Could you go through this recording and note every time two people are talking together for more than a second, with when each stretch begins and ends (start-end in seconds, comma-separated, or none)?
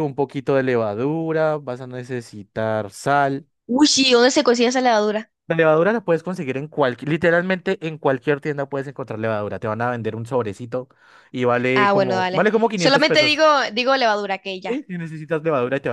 11.7-13.4